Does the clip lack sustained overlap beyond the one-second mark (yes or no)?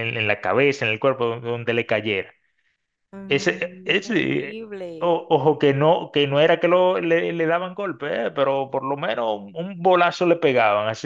no